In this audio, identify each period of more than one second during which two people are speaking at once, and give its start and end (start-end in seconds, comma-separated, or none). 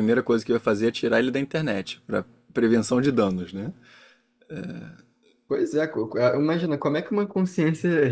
none